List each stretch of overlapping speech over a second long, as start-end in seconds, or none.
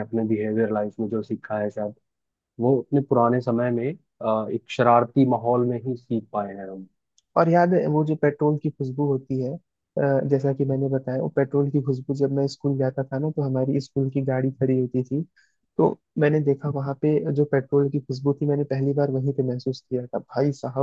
none